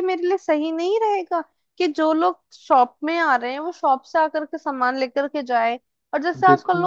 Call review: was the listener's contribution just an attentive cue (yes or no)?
yes